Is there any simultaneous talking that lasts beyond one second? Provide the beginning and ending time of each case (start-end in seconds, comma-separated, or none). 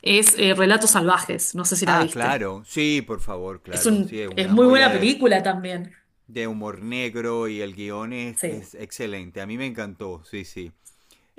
3.7-5.1